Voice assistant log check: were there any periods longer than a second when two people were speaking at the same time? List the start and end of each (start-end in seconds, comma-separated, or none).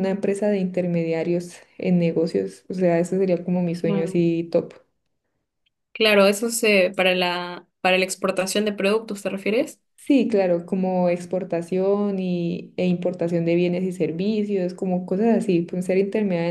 none